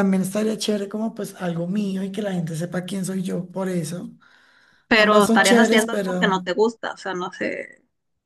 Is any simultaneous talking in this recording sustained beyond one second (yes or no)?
yes